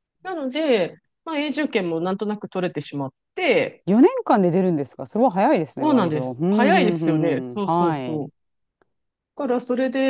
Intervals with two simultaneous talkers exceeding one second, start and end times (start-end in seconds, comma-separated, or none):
5.8-8.3